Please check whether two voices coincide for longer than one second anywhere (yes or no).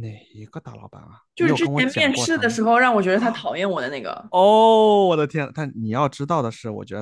yes